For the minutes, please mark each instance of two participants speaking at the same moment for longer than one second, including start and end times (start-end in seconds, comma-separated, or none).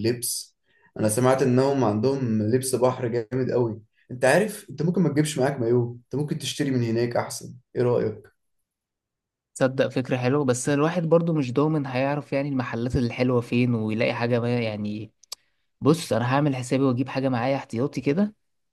none